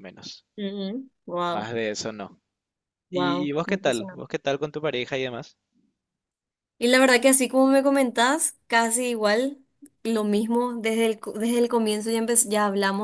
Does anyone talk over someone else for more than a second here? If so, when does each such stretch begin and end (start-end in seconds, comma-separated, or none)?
3.1-4.4